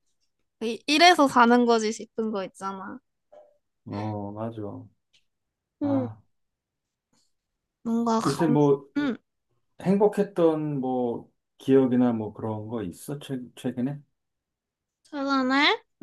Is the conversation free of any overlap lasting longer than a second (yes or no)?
yes